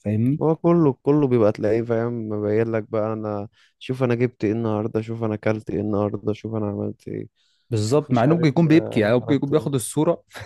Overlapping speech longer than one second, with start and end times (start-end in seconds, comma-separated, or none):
7.8-9.7